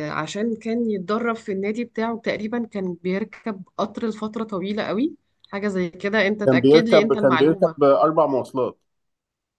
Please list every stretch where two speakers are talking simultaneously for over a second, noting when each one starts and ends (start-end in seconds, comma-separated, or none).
6.5-7.9